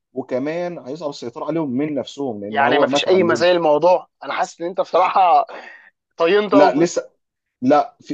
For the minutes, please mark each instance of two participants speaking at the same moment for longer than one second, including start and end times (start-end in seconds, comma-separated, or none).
2.5-3.7